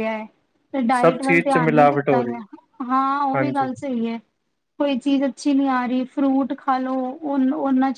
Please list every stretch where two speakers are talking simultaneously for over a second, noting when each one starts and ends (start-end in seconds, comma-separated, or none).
1.0-2.4